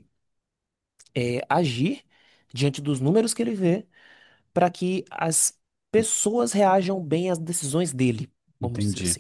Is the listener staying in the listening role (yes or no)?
no